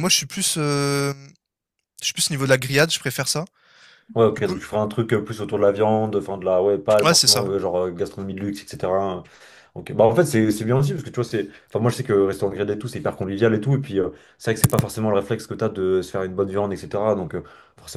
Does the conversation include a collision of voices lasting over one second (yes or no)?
no